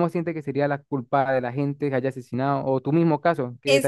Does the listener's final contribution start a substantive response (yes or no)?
yes